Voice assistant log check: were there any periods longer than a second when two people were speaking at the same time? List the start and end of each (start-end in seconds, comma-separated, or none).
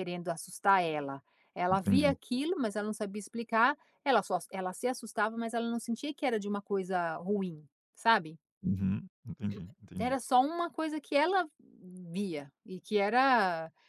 none